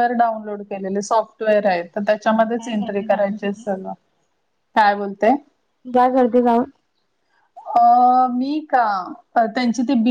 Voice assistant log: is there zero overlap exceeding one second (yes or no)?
no